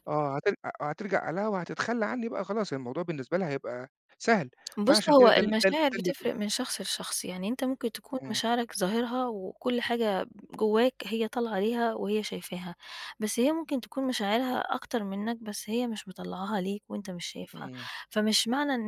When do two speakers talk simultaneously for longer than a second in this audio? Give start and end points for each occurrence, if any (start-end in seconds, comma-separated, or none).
4.8-6.1